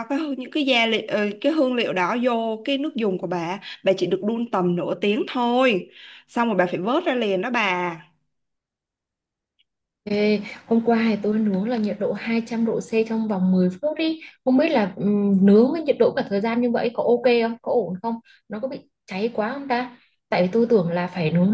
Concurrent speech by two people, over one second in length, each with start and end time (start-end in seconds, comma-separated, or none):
none